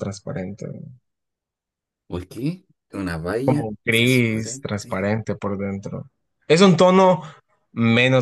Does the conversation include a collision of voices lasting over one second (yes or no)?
yes